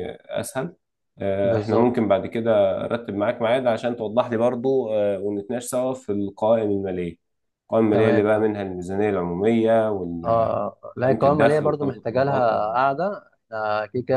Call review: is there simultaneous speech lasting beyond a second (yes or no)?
yes